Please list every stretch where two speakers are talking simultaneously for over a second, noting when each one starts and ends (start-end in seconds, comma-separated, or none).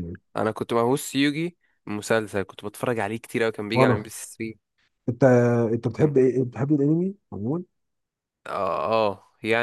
none